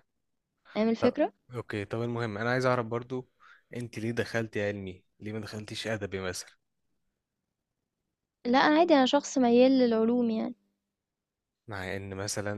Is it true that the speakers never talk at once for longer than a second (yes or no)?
yes